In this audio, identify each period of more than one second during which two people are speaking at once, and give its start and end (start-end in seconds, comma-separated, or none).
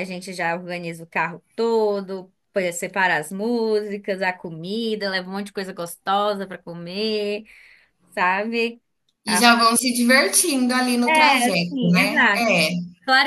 11.1-12.5